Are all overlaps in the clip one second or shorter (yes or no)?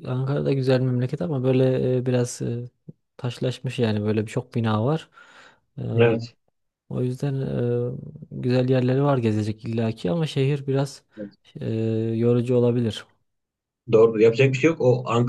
yes